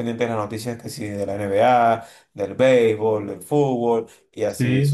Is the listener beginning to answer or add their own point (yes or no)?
no